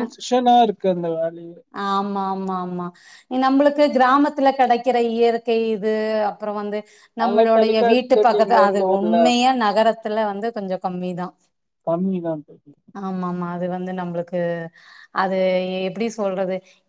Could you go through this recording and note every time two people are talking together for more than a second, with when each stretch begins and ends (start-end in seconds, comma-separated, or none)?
7.2-9.2